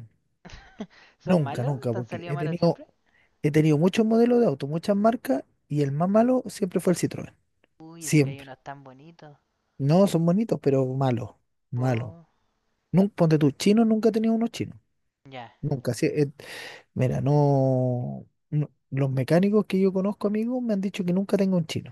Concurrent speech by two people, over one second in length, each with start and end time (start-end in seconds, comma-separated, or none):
1.2-2.8